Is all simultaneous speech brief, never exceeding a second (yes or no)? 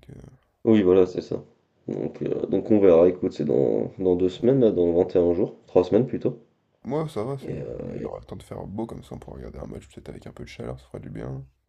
yes